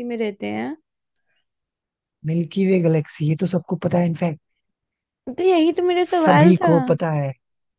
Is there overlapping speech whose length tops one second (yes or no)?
no